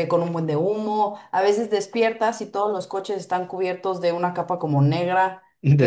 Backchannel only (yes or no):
yes